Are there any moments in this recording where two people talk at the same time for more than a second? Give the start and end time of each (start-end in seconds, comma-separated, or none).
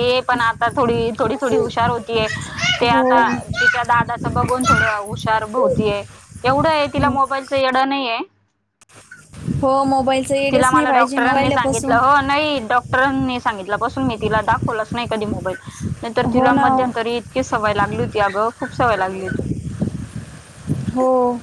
10.5-12.0